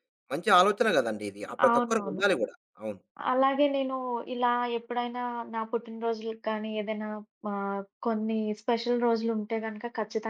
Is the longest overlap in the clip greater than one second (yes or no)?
no